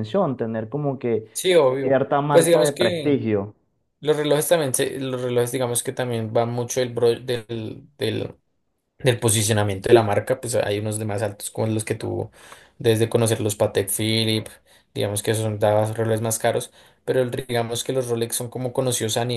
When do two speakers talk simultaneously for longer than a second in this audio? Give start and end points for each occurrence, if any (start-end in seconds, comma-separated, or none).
1.8-3.2